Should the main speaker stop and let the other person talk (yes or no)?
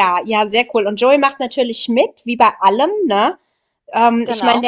no